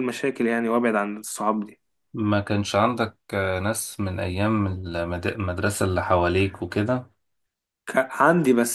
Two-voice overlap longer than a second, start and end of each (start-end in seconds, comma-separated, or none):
none